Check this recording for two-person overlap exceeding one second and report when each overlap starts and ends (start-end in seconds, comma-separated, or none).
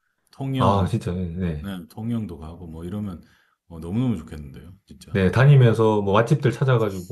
none